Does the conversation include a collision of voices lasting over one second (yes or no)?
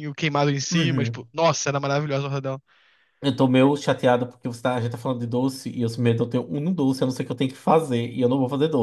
no